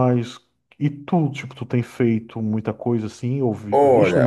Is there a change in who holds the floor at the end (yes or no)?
yes